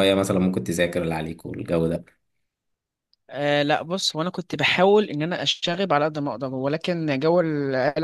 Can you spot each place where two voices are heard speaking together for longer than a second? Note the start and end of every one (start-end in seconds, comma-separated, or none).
none